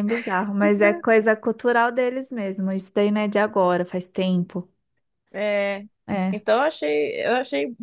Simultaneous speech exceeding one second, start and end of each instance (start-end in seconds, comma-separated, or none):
none